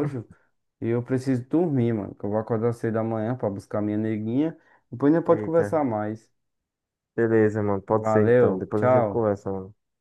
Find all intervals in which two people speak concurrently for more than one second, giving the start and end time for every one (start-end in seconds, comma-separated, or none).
8.0-9.3